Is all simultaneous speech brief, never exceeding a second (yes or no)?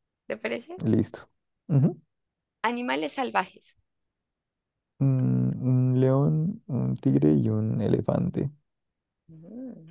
yes